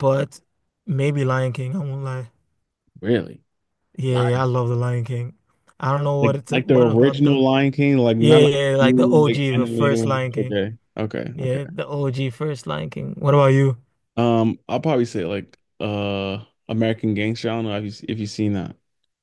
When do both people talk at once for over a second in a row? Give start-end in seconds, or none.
6.2-7.4, 8.2-10.6